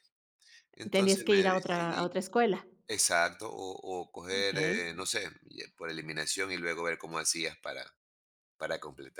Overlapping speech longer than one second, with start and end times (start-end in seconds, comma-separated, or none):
0.9-2.1